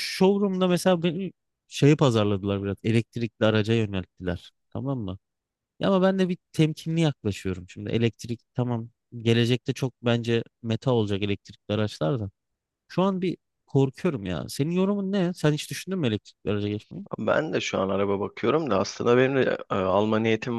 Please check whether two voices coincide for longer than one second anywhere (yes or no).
no